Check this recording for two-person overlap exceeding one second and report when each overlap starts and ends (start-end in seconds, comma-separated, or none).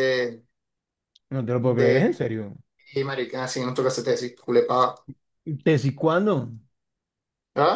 none